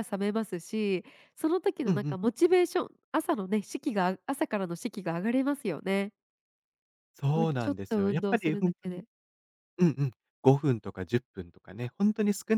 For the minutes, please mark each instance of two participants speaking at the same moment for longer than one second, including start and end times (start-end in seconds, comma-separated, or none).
7.3-9.0